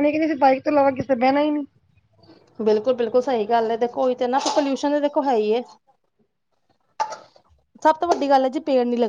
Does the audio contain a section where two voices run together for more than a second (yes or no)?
no